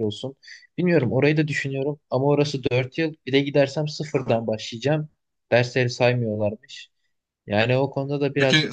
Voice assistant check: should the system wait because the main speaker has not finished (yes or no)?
no